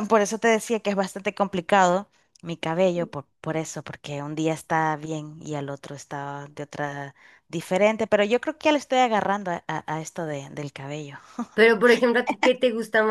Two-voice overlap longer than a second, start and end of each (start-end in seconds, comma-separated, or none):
none